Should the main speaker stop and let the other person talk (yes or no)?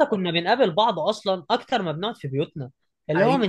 no